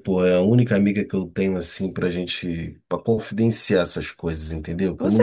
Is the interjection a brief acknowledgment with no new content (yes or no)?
no